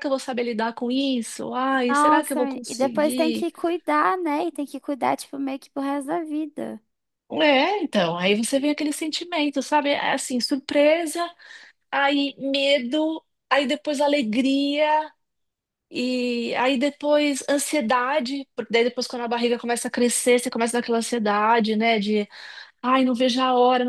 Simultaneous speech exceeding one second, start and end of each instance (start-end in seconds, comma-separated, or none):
1.9-3.5